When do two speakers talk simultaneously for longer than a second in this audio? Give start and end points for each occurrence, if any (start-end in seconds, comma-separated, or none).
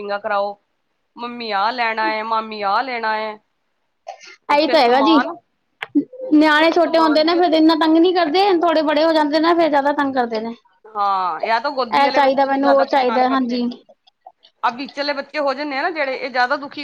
12.0-13.6